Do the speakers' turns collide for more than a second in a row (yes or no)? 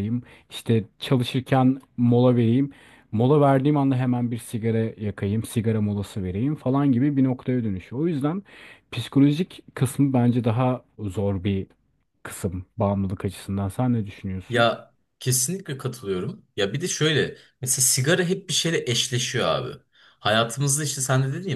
no